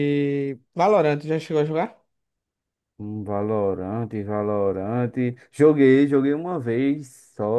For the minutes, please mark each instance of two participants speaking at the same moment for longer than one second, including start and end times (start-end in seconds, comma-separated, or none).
none